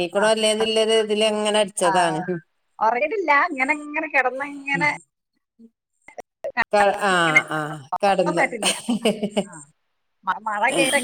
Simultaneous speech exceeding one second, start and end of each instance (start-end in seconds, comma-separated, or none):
none